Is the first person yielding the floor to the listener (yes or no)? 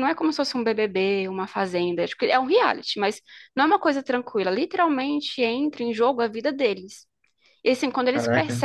no